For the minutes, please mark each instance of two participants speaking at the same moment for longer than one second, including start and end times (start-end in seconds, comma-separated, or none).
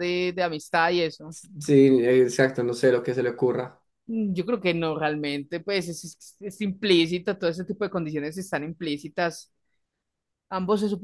none